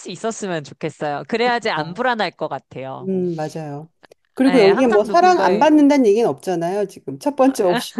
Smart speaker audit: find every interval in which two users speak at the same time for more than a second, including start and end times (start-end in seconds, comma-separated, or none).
4.5-5.7